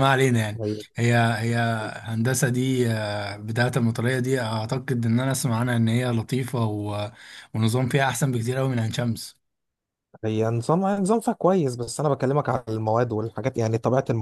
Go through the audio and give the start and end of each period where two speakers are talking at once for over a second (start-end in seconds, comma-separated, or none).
none